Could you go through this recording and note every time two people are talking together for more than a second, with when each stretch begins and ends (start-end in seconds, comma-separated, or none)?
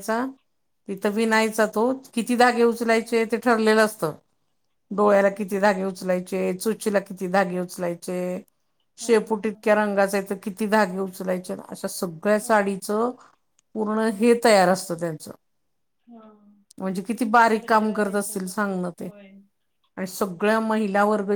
17.6-19.1